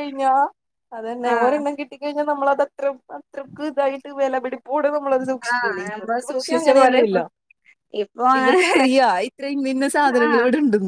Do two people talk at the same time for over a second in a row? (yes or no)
yes